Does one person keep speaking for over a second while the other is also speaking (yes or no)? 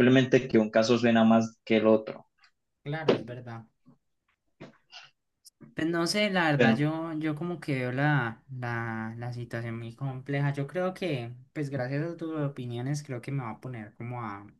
no